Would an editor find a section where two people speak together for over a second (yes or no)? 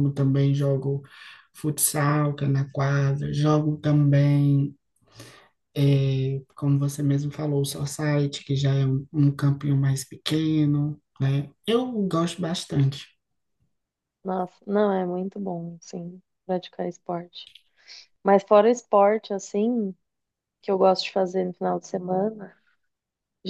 no